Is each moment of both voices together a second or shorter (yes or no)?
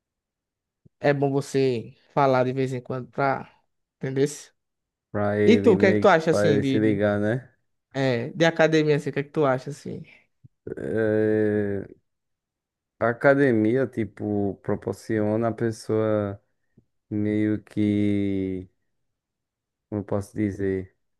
no